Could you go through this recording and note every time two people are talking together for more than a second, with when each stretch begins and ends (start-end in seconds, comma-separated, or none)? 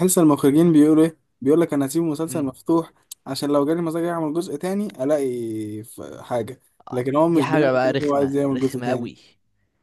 6.9-9.1